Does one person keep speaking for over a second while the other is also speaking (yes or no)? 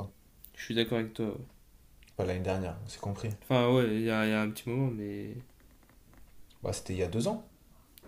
no